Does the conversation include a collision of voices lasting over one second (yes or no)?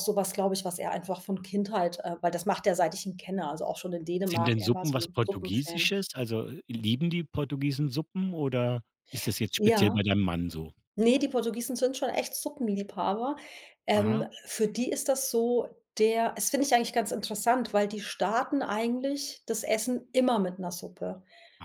yes